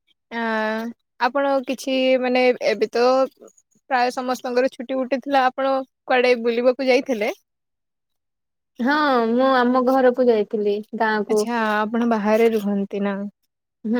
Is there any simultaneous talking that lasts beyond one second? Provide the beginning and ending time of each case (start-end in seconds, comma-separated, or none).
none